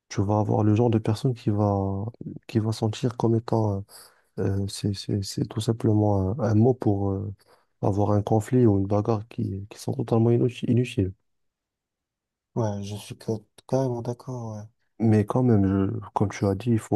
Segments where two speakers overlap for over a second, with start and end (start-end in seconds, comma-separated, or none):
none